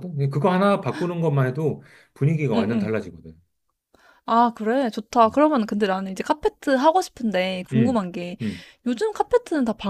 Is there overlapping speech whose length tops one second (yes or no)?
no